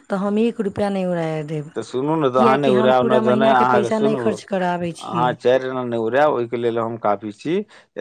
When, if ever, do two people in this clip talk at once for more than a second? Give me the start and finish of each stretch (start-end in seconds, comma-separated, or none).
3.5-5.3